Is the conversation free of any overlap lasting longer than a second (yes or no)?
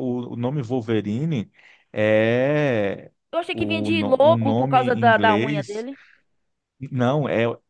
no